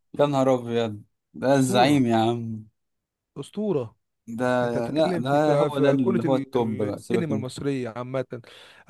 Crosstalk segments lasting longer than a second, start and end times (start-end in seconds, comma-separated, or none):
4.9-7.5